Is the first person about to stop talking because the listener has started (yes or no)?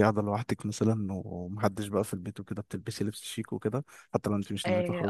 yes